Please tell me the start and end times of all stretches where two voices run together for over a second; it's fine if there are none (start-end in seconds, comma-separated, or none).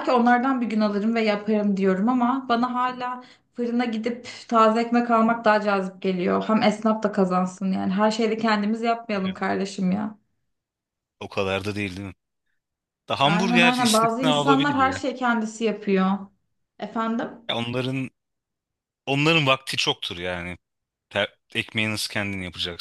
13.2-15.0